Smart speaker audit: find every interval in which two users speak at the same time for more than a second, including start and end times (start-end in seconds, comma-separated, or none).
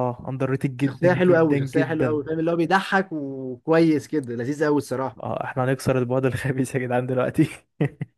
0.8-2.2